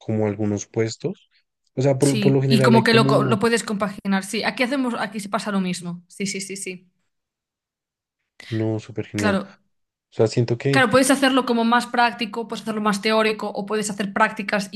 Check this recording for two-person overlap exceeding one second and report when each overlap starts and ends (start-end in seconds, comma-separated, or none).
2.0-3.4